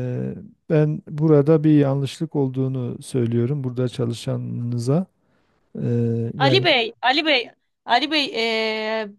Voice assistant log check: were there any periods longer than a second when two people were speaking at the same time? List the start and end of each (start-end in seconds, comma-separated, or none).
none